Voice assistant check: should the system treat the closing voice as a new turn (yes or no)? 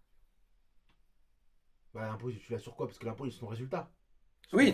yes